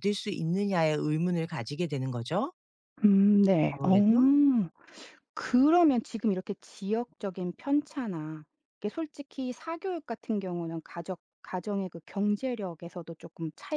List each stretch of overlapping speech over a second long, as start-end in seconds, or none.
none